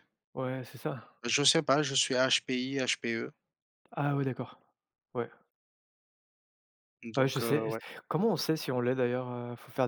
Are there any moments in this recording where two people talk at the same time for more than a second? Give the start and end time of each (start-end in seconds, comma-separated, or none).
none